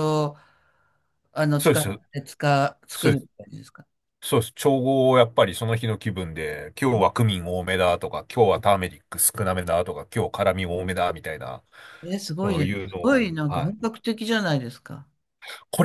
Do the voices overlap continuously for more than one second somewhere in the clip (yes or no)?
yes